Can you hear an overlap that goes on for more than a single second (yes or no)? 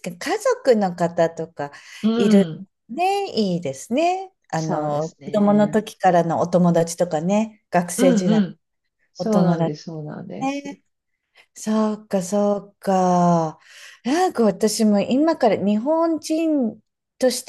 yes